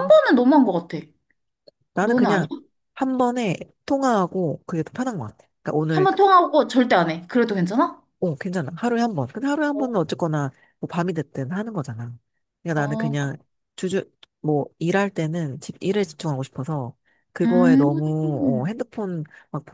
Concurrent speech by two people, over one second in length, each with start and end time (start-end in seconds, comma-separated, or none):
17.4-18.7